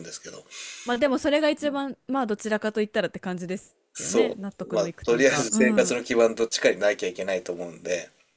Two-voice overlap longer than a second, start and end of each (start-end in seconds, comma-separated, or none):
3.9-6.0